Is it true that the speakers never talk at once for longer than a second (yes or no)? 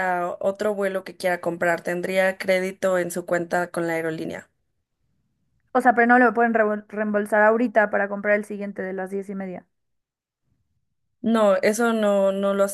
yes